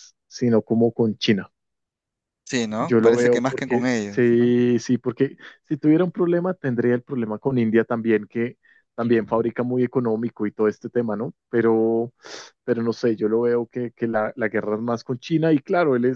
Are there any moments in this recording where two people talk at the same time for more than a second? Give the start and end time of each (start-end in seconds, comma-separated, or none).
2.8-4.5